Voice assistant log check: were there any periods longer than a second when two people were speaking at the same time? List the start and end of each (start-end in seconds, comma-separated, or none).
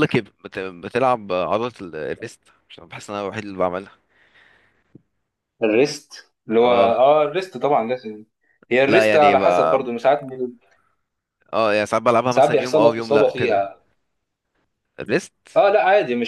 12.3-13.6